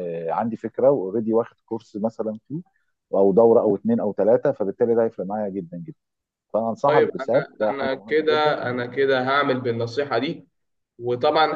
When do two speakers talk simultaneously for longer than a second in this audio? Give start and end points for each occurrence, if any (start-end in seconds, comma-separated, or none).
6.8-8.6